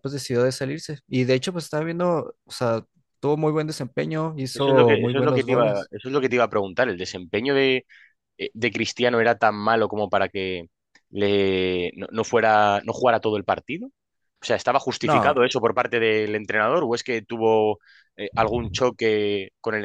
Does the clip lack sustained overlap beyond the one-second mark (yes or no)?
no